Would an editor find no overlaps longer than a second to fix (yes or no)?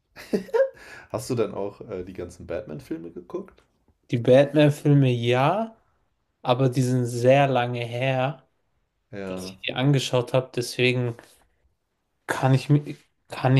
yes